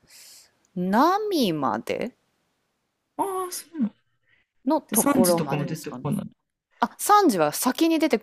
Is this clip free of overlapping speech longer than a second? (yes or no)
no